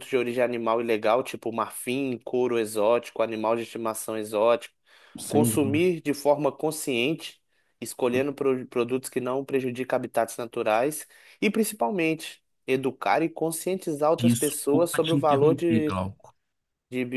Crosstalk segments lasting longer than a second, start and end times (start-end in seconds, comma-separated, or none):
14.2-16.0